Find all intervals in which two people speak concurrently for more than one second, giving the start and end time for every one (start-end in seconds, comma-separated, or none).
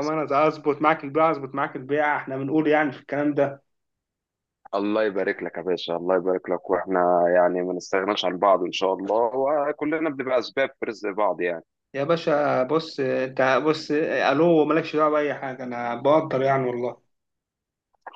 none